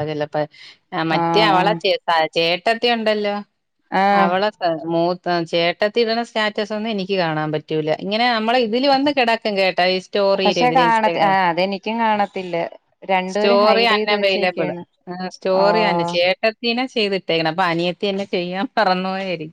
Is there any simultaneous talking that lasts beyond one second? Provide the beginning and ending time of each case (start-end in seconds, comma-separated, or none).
13.3-14.7